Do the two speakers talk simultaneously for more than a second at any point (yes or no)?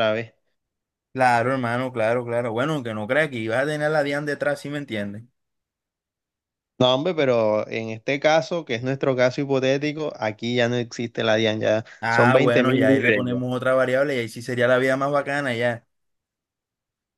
yes